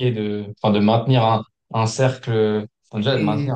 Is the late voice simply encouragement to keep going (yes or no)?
yes